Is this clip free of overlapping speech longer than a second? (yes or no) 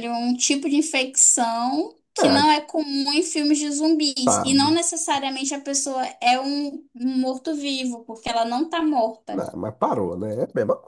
yes